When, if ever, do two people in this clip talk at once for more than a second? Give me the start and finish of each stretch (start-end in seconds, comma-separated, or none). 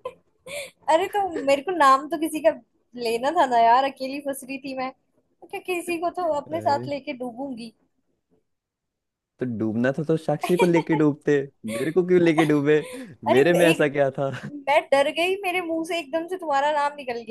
none